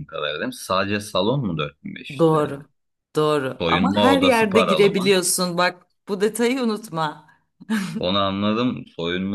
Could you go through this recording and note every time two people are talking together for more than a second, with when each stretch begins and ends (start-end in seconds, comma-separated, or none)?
3.6-5.1